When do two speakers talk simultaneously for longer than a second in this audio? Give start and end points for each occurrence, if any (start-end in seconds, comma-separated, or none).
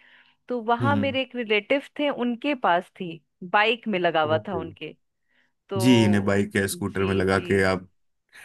5.8-7.7